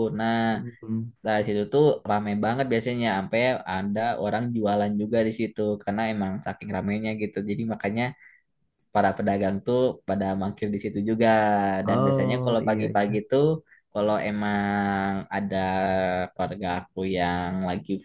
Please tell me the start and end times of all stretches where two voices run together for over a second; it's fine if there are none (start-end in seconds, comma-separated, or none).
11.9-13.2